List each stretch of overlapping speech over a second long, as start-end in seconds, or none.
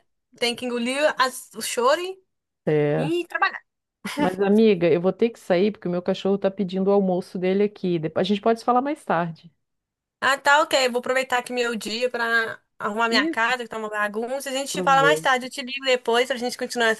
none